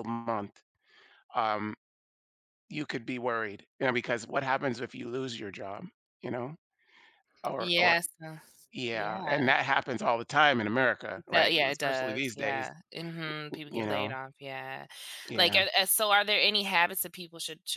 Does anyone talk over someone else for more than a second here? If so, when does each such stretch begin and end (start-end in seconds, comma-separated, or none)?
11.3-12.7